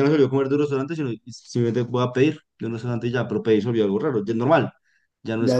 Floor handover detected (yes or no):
yes